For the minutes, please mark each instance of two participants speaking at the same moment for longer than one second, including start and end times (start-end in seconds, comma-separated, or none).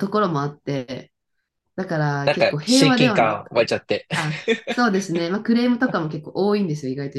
2.2-3.7